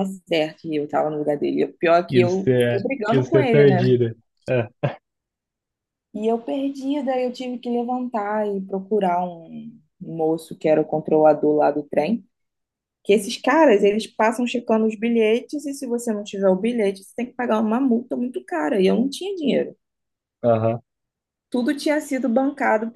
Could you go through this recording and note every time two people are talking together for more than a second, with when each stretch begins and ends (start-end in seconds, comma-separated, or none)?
2.1-3.8